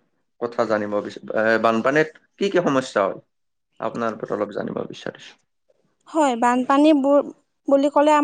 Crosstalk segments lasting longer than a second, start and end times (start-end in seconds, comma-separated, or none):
none